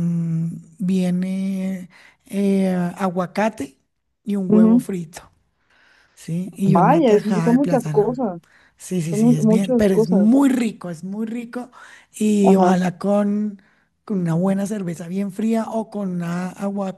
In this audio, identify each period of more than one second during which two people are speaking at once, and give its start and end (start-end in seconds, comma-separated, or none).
6.7-8.2, 9.1-10.3